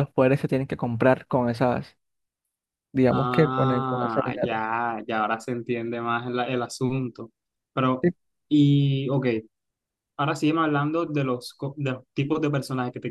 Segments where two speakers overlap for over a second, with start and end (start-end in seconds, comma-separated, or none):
3.1-4.6